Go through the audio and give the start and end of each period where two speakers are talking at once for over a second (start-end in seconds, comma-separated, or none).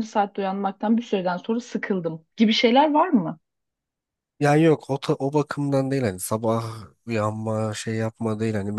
none